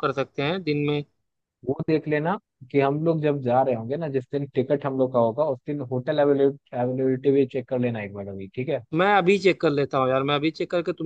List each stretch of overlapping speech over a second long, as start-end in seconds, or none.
none